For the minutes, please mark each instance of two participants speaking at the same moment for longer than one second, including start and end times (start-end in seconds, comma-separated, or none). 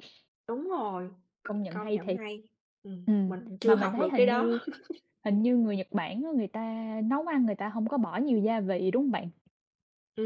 3.1-4.6